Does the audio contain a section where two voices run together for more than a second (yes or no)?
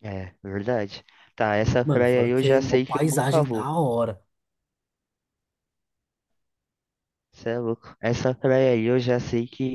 yes